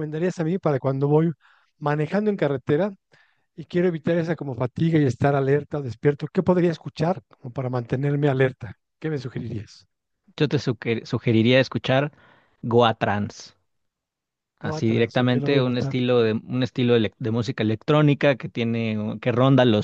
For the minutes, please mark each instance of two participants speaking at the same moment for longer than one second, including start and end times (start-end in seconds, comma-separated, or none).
14.6-16.0